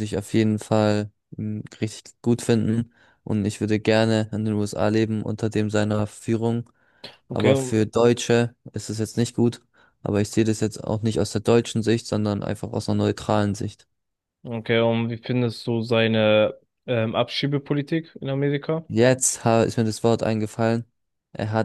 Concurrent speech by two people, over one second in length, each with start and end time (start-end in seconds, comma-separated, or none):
none